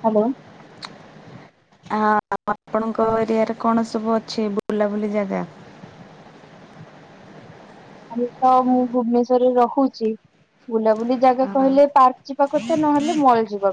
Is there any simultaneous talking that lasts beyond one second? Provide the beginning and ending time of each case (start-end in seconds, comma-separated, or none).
none